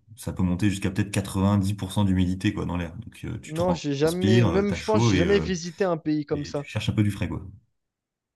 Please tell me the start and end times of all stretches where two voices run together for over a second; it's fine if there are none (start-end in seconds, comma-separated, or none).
3.5-5.5